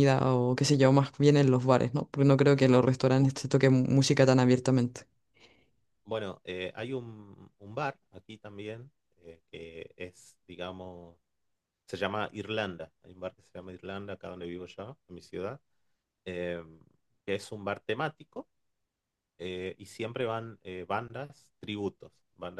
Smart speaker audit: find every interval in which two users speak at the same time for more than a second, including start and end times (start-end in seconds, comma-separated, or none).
none